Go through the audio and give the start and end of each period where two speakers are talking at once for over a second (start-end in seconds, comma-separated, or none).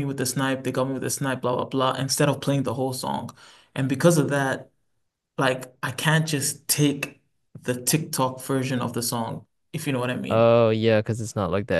none